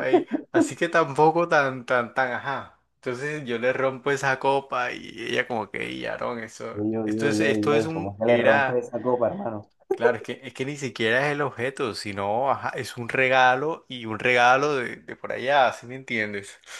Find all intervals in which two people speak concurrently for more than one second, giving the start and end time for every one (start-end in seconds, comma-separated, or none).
6.8-8.8